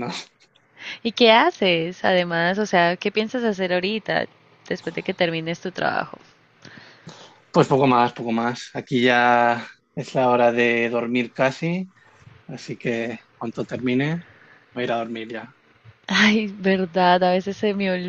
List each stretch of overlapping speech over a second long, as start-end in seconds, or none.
none